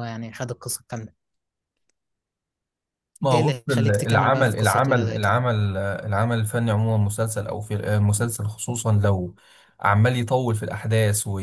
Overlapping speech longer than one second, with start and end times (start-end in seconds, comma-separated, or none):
3.3-5.4